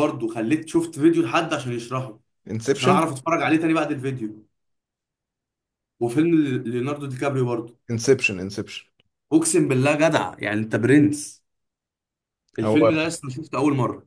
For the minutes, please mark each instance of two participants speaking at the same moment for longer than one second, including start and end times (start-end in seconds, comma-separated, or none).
none